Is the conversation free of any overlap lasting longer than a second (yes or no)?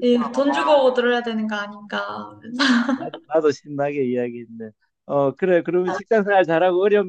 yes